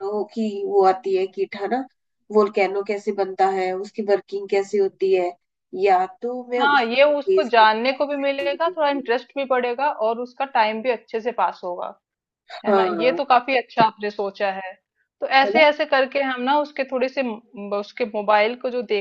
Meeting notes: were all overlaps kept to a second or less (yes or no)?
no